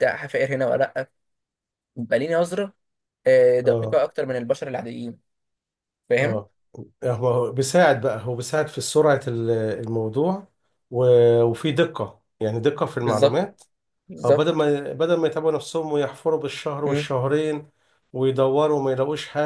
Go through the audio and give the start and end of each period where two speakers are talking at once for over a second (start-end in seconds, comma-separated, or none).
none